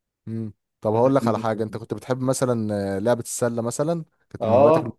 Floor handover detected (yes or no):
yes